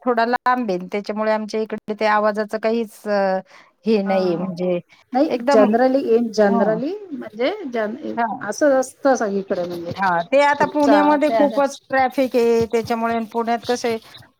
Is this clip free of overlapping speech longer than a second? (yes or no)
yes